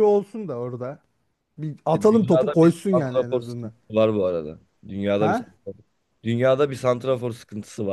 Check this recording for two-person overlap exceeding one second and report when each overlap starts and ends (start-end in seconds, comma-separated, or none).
1.9-3.7